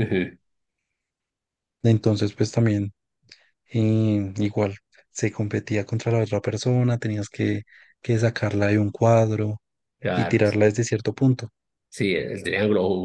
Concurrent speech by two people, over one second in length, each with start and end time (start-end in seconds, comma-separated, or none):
none